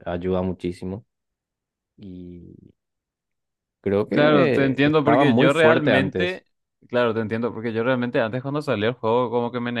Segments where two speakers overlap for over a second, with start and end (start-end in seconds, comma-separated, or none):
4.1-6.4